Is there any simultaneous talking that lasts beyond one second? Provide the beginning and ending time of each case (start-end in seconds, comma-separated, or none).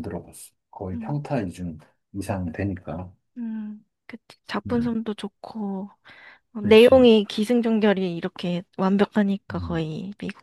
none